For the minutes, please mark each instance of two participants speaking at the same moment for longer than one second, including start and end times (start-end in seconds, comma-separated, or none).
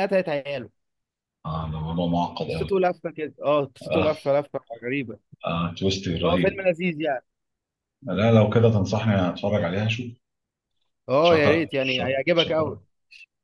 11.2-12.8